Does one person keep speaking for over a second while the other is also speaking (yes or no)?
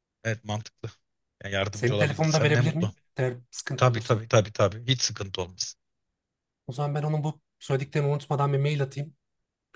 yes